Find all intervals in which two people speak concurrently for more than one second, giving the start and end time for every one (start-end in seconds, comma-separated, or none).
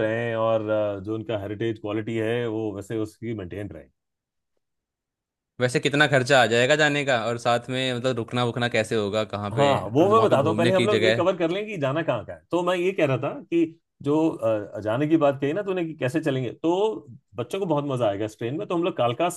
9.6-11.3